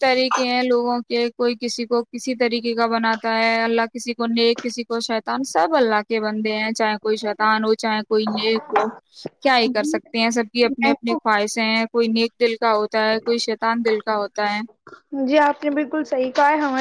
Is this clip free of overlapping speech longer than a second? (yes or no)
yes